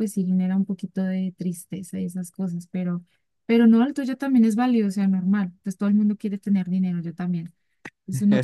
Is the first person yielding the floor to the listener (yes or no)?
yes